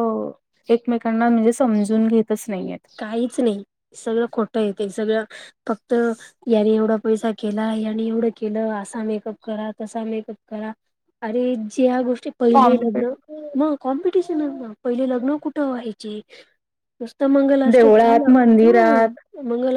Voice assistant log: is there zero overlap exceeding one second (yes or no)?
no